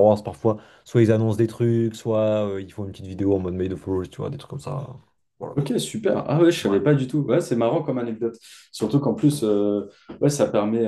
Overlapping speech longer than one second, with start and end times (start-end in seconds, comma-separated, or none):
none